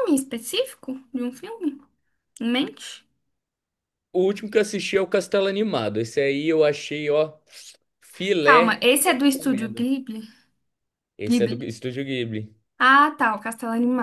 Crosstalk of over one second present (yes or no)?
yes